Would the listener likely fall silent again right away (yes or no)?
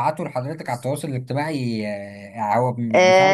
no